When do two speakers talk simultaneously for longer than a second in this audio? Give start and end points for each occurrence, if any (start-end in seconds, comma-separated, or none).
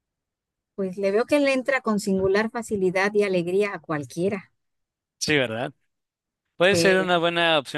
none